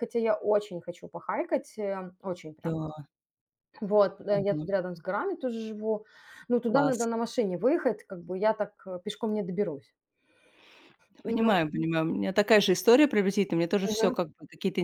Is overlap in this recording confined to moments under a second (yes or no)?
yes